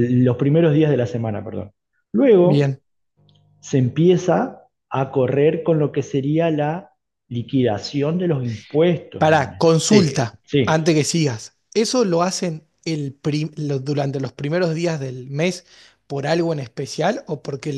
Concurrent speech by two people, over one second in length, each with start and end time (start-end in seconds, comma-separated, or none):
9.2-11.0